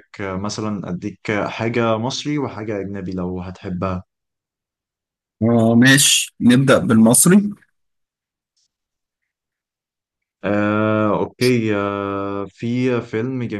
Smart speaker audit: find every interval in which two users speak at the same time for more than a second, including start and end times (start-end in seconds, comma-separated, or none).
none